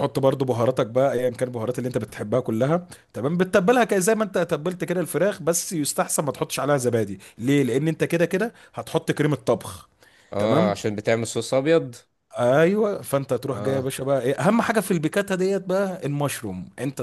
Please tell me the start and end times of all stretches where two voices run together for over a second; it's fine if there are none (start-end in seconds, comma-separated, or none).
none